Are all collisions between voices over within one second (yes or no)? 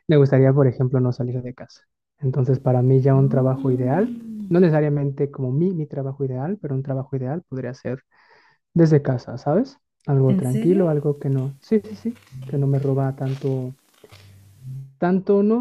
no